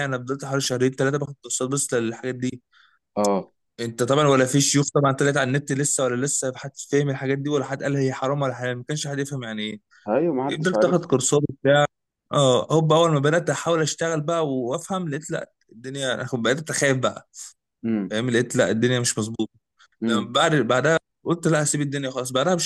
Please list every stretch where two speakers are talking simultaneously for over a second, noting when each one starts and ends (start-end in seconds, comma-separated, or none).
none